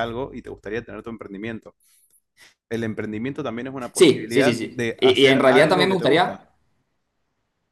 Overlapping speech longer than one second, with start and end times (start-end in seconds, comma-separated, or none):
3.9-6.4